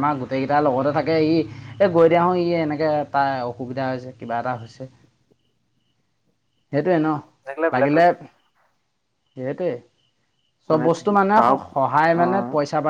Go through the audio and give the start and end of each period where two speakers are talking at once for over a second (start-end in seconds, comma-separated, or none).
10.7-12.2